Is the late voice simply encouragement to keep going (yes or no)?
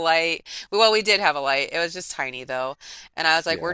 yes